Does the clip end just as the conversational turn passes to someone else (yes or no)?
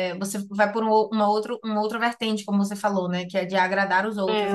yes